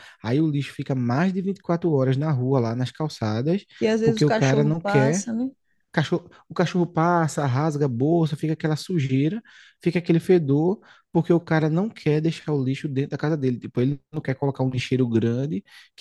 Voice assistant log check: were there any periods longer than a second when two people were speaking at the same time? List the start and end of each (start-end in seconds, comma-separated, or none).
4.0-5.2